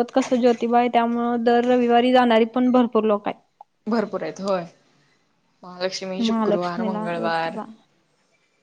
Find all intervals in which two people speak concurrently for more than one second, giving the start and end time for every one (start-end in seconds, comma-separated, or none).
6.3-7.6